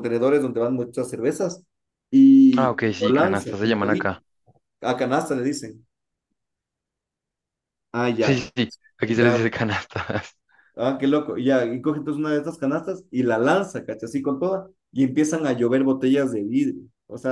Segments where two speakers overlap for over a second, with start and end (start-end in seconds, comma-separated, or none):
2.6-4.1